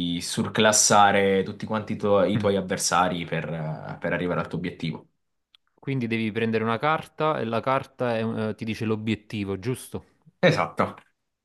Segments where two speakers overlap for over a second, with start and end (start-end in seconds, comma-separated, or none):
none